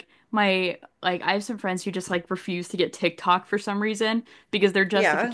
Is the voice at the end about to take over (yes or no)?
no